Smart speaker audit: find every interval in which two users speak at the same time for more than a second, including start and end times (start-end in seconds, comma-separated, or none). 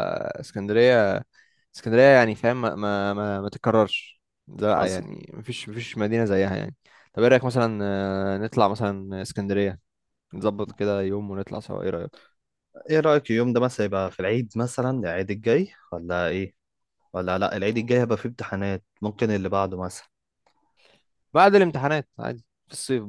none